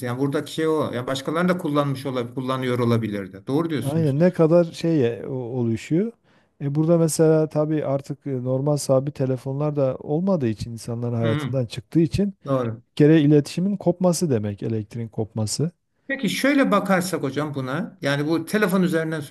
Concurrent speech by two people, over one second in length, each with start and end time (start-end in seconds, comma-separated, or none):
none